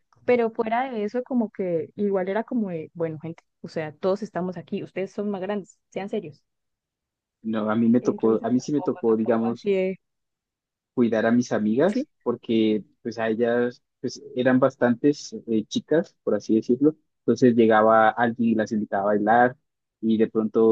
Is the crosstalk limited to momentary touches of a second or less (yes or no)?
no